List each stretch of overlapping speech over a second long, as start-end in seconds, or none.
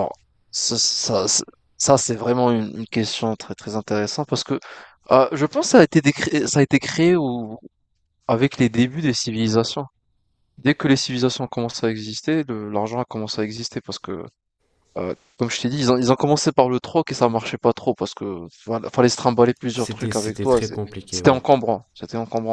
19.7-21.4